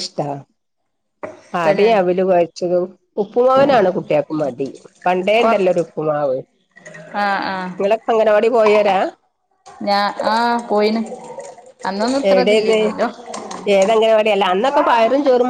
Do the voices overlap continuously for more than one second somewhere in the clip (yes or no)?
no